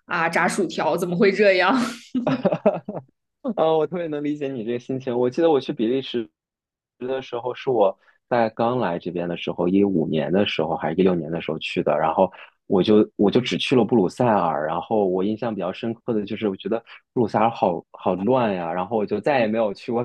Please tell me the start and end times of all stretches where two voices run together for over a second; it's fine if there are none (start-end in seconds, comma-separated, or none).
none